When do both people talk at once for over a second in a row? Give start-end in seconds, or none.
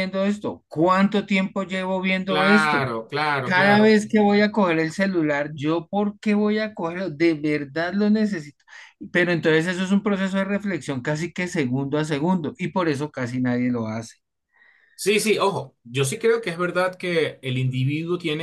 none